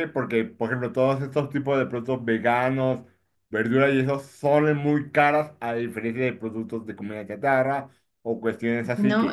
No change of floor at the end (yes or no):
no